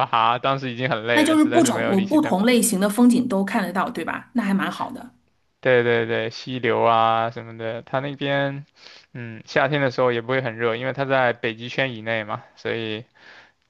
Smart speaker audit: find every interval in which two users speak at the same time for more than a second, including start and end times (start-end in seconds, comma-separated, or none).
1.1-2.5